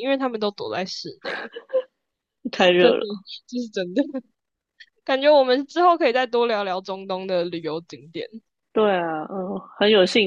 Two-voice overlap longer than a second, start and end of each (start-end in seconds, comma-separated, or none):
none